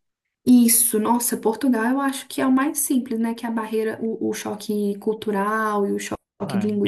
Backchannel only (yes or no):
no